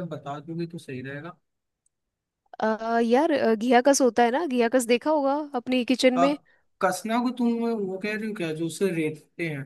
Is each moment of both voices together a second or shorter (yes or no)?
yes